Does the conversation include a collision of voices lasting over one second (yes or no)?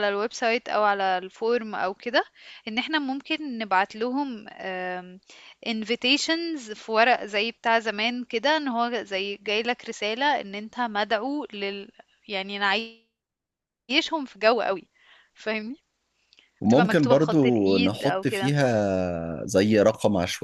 yes